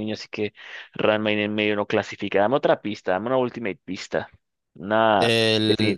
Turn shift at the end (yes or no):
yes